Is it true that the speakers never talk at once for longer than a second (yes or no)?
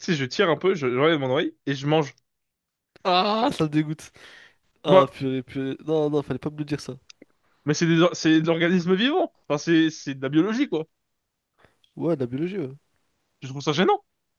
yes